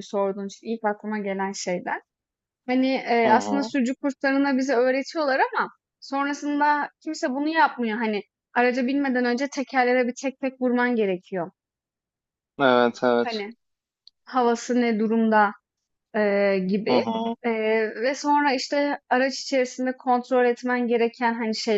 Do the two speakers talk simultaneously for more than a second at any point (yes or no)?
no